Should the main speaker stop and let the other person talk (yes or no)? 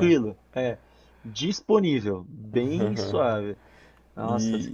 yes